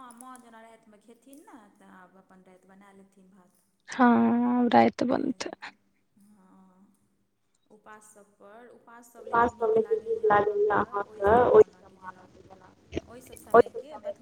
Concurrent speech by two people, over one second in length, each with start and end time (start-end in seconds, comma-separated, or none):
none